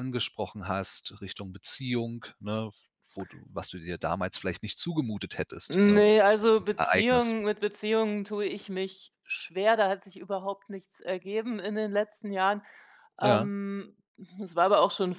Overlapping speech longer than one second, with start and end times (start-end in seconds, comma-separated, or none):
5.7-7.3